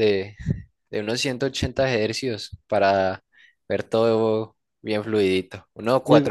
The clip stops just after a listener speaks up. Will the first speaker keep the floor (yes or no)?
yes